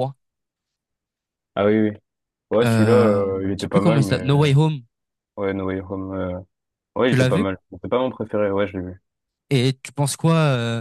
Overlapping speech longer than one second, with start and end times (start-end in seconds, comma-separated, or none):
2.6-4.5